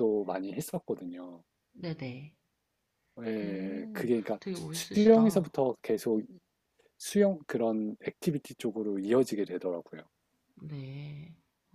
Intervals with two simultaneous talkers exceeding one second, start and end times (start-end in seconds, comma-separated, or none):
3.4-5.5